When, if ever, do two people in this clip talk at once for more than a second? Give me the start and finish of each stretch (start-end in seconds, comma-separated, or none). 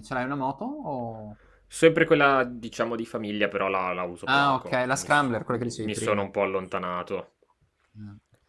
4.2-6.2